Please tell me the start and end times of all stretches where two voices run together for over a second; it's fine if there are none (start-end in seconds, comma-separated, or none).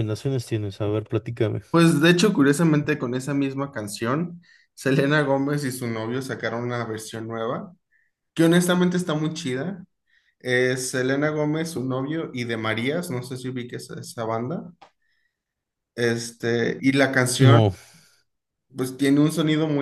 none